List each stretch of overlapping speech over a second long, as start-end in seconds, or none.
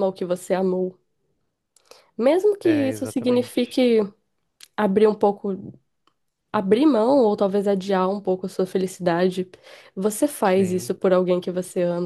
2.6-3.8